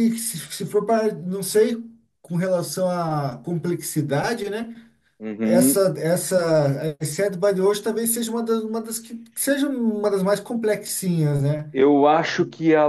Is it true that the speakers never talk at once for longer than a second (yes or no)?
yes